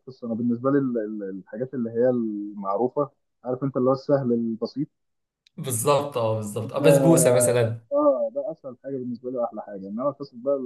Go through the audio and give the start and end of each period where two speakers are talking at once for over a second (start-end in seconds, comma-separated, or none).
none